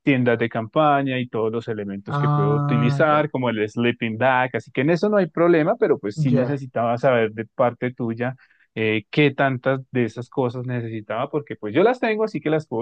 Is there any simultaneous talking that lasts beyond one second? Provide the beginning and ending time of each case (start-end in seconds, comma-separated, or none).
2.1-3.3